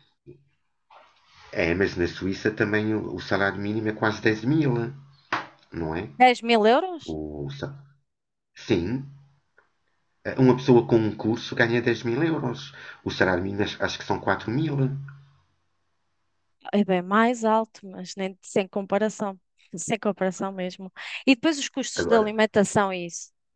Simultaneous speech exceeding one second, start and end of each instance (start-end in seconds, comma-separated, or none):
none